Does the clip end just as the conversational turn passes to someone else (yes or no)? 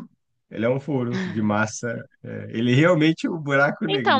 yes